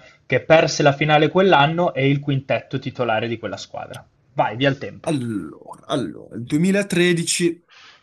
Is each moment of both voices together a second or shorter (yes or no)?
yes